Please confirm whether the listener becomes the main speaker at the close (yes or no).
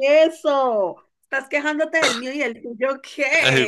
yes